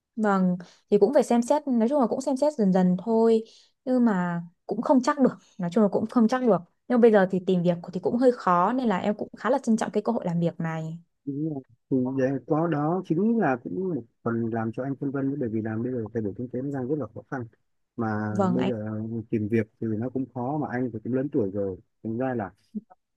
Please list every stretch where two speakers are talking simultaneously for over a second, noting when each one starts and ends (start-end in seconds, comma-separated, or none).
none